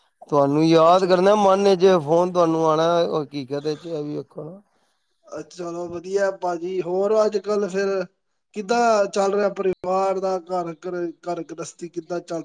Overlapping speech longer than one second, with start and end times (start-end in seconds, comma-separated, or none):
none